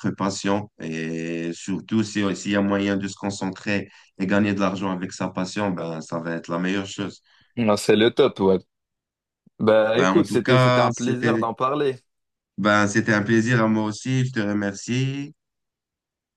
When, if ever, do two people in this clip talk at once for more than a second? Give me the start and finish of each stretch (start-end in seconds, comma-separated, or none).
9.9-11.5